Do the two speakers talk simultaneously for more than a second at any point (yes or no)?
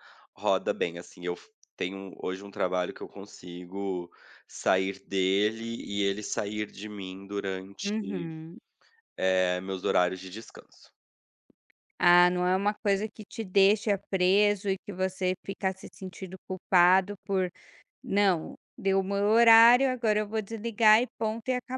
no